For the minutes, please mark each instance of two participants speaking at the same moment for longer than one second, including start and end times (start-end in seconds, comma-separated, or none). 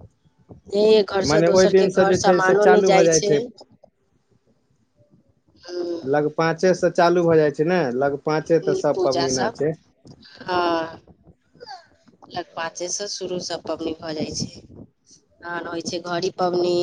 1.2-3.0